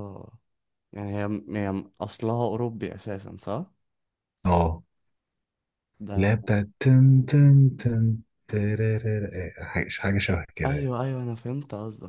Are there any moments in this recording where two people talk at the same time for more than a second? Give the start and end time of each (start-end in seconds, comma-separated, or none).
none